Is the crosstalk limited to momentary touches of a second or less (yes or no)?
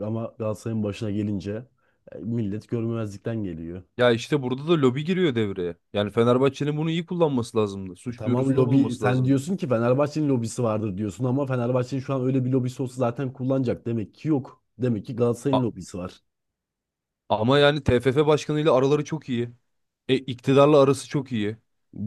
no